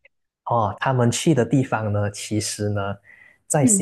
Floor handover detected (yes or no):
no